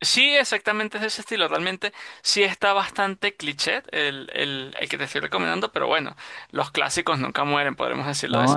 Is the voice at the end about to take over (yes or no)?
yes